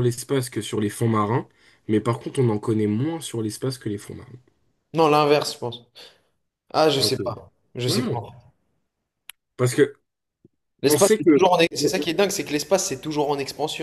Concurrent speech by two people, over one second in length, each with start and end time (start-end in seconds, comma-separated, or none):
none